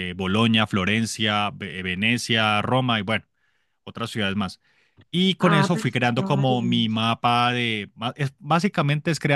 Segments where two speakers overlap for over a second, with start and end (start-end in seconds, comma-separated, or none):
5.4-7.0